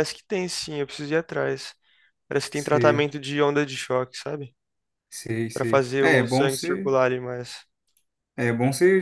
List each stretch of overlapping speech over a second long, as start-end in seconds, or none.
5.5-7.0